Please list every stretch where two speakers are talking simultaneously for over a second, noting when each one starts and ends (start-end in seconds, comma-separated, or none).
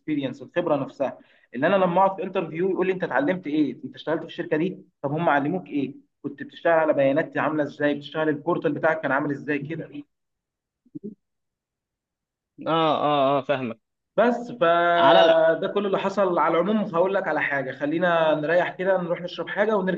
none